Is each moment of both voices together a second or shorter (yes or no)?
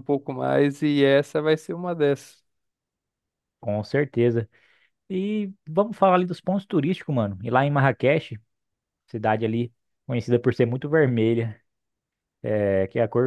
yes